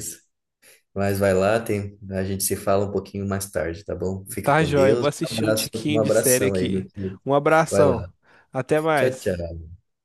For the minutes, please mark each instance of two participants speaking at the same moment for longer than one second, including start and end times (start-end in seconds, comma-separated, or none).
4.4-6.9